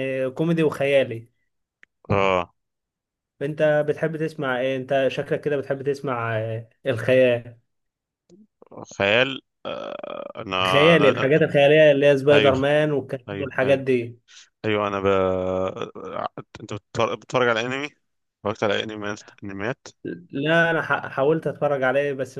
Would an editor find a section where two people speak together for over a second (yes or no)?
no